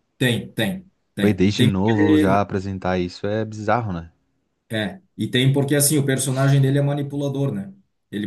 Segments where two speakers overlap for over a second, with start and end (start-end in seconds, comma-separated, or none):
1.2-2.5